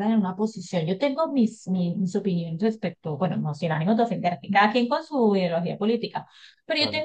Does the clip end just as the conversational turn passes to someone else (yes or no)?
no